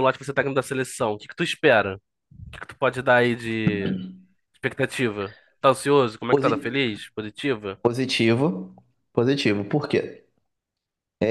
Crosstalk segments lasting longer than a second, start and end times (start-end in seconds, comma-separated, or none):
none